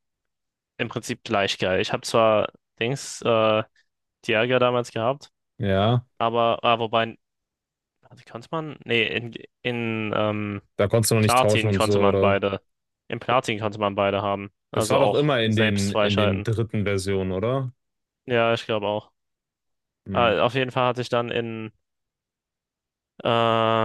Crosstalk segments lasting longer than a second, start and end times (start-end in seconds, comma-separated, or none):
11.2-12.4, 14.7-16.5